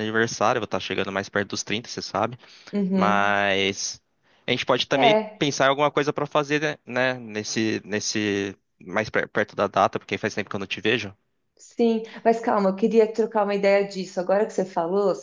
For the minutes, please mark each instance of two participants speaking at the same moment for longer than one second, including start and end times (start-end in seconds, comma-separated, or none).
none